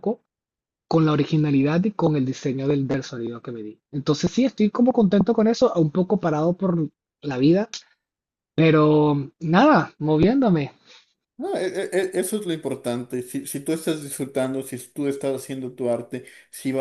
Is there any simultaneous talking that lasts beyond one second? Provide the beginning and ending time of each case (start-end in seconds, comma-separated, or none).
none